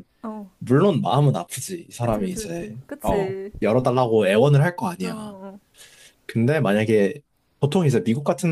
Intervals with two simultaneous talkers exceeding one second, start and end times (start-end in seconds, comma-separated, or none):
2.0-3.5